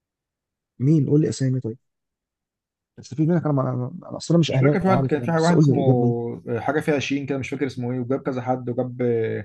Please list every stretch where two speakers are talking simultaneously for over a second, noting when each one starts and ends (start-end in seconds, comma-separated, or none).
4.5-5.8